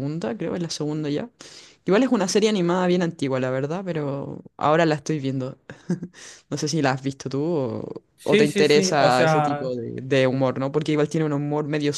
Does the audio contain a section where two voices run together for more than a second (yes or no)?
yes